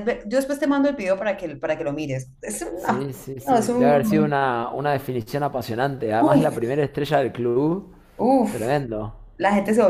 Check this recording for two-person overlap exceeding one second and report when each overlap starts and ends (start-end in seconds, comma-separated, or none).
2.8-4.3